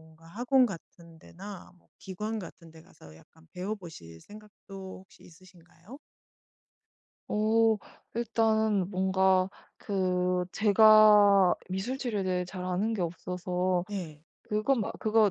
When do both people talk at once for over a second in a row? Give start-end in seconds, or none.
none